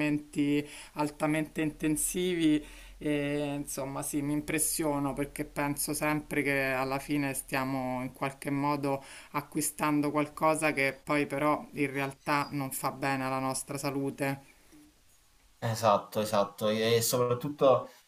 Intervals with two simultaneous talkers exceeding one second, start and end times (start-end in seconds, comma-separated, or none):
none